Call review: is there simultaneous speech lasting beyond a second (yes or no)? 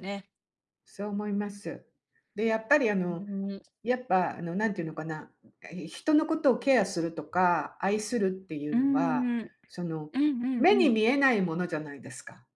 no